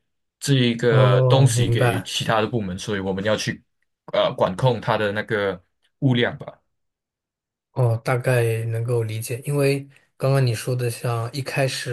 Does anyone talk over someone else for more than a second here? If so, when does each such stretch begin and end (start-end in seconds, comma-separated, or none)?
0.9-2.1